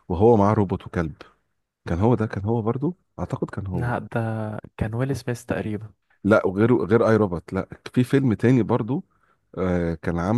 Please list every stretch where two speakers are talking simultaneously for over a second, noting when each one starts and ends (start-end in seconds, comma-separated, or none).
none